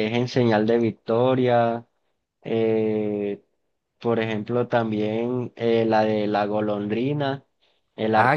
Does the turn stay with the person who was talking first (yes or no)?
no